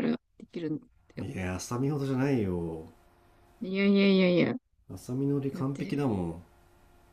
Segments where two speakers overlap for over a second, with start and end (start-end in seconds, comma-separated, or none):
none